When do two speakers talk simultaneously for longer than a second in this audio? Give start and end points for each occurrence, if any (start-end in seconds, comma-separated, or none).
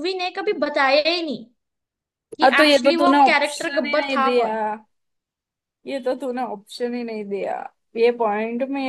2.4-4.5